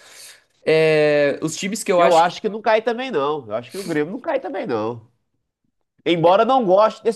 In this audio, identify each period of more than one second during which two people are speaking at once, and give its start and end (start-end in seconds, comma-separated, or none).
none